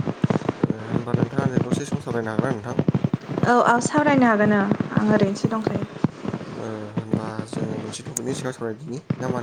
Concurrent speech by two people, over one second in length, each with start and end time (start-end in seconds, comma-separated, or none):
none